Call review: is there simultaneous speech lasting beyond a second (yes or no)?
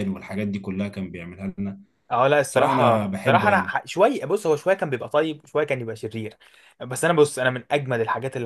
yes